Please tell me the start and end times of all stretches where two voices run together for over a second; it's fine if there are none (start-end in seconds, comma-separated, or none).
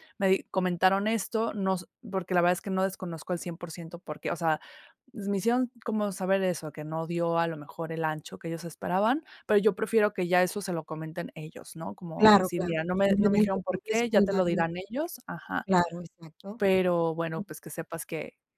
12.2-14.6